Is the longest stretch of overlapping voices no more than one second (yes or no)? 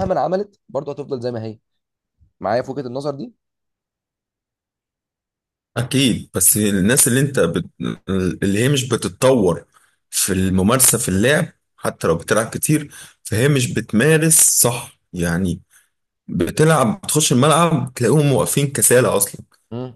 yes